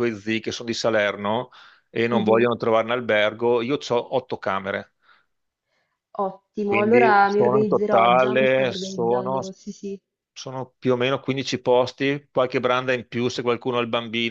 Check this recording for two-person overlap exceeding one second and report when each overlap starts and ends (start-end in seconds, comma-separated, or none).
6.6-9.4